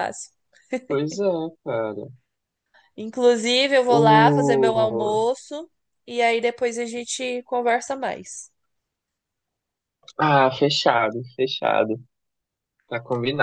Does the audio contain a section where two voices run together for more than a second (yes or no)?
yes